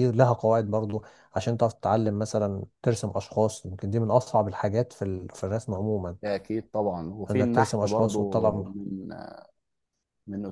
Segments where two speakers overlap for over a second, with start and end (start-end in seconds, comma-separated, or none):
7.3-8.7